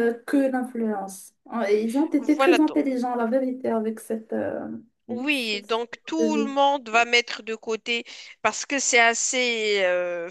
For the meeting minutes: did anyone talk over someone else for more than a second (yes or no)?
yes